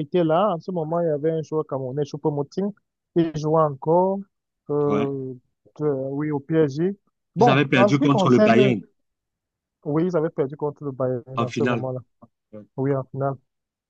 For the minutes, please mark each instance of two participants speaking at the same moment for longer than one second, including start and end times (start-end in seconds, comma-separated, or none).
7.4-8.8